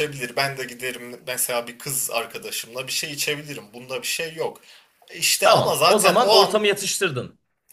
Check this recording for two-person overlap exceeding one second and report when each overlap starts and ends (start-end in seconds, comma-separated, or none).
5.4-6.6